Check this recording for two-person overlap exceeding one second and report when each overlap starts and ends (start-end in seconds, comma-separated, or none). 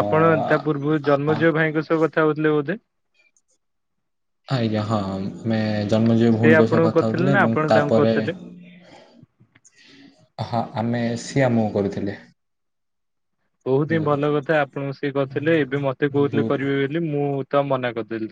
6.3-8.2